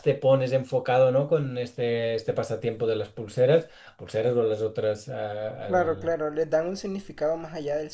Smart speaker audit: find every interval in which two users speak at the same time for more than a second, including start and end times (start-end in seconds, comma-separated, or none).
none